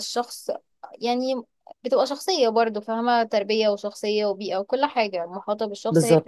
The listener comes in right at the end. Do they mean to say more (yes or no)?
no